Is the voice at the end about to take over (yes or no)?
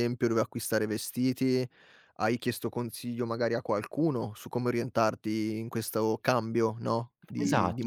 yes